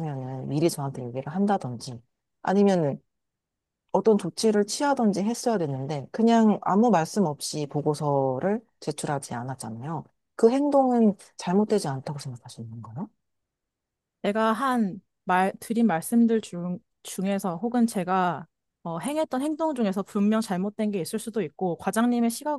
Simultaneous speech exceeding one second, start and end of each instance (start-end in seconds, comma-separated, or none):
none